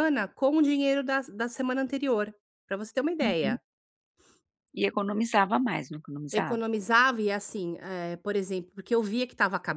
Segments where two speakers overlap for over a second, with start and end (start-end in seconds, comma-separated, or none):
none